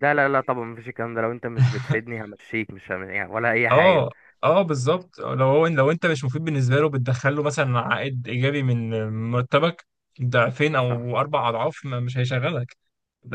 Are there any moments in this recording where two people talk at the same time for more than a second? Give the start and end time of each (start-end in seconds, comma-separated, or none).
none